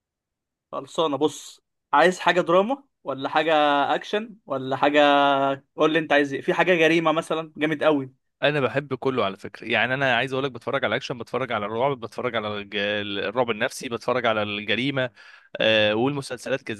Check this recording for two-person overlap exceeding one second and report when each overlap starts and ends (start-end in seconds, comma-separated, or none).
none